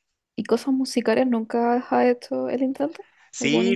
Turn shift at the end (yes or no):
yes